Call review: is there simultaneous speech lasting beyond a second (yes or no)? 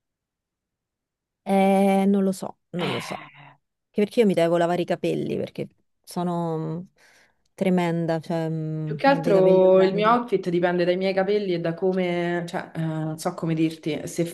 yes